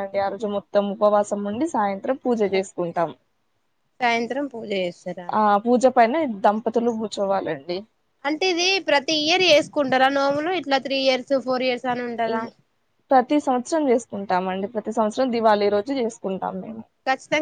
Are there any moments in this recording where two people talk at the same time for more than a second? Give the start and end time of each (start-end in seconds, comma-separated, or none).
none